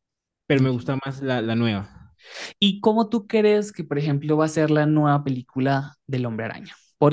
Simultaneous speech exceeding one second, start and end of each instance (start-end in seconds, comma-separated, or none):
none